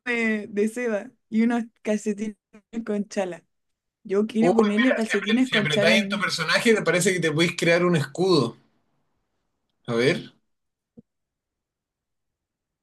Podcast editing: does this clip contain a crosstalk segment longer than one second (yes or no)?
yes